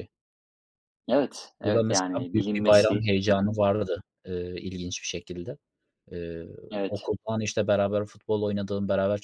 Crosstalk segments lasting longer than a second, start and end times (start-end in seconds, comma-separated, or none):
1.6-3.6